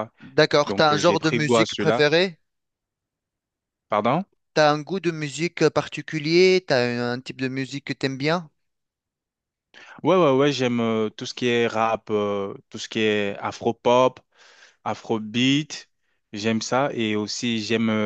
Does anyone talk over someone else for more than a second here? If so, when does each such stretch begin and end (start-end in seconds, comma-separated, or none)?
0.7-2.1